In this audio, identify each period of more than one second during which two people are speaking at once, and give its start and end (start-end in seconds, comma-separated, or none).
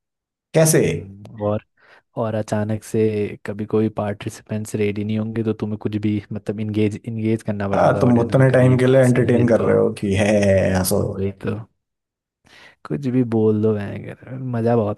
7.7-9.7